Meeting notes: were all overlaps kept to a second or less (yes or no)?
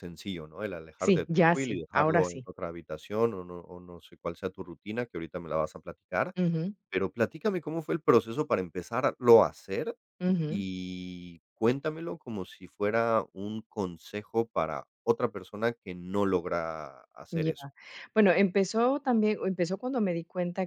no